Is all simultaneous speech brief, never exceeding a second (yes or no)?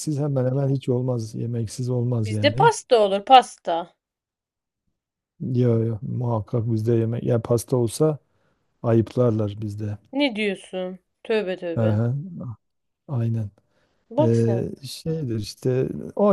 yes